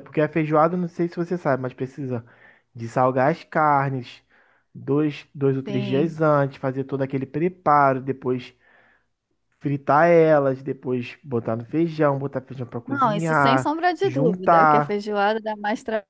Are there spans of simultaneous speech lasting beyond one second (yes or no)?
yes